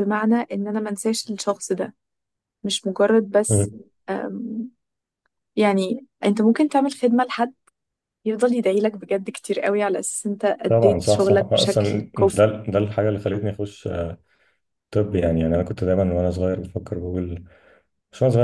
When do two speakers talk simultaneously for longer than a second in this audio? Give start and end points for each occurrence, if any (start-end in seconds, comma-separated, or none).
10.7-12.4